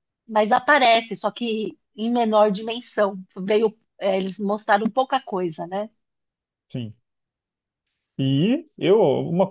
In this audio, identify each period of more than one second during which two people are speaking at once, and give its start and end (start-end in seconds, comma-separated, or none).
none